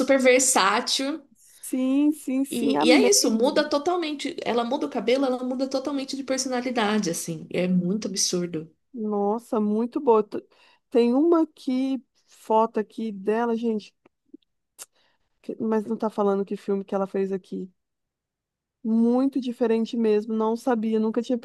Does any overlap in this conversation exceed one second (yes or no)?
yes